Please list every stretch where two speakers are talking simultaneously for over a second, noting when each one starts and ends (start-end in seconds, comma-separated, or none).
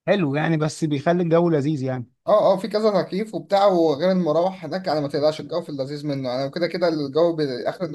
none